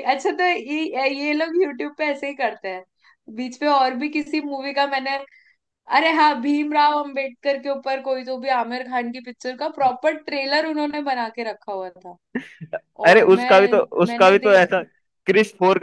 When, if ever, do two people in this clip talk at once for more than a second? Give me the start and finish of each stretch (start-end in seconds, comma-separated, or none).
13.1-14.8